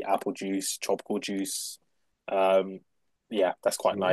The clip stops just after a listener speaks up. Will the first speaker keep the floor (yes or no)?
yes